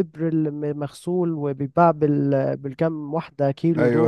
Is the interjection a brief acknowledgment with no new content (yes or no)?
no